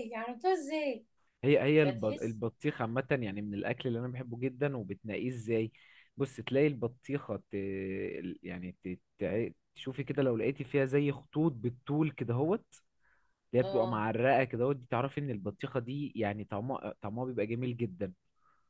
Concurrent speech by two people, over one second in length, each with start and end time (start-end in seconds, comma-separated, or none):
none